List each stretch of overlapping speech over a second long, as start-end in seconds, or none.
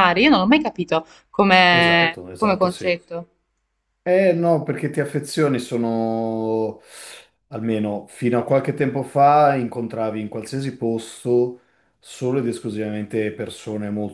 1.7-2.9